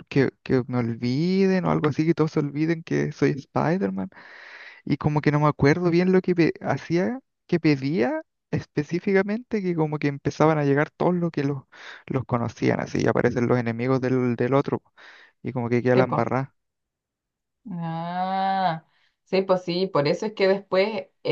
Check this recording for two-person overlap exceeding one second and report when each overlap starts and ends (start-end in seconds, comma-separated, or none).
none